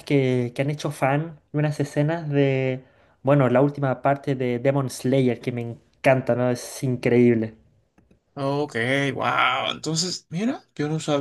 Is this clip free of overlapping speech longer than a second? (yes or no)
yes